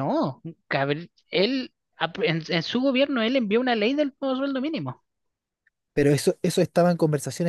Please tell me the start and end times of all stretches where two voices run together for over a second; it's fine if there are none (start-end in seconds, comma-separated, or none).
none